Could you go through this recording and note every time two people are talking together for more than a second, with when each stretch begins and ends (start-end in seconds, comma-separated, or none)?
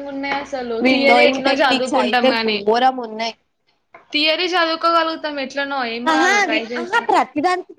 0.9-2.6